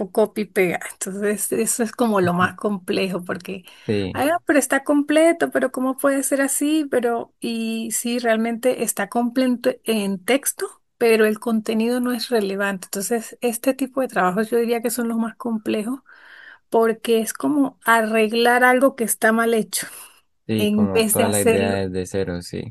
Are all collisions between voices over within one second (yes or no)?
no